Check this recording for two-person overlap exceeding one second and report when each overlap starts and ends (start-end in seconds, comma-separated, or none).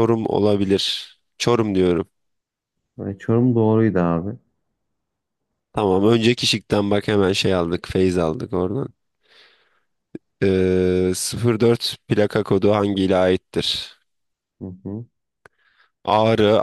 none